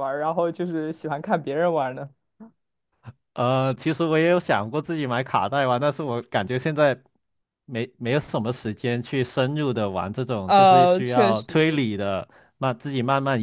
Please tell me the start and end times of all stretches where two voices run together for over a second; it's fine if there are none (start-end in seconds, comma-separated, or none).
10.5-11.8